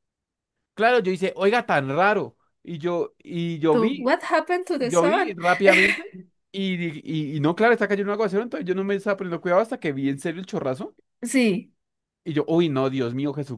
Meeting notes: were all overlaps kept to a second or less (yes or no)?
yes